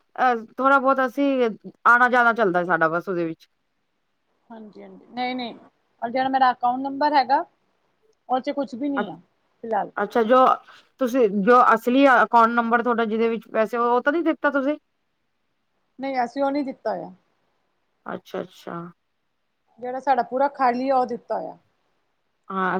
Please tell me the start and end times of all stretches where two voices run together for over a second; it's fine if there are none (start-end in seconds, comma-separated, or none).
none